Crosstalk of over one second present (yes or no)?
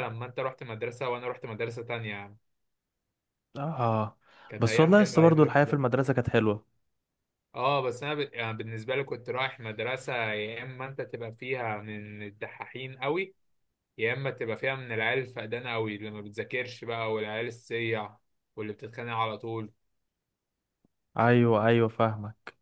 yes